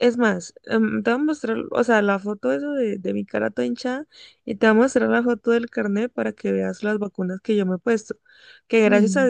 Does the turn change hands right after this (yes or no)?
no